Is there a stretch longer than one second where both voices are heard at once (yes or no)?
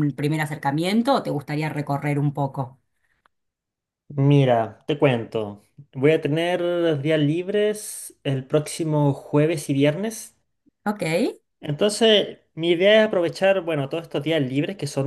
no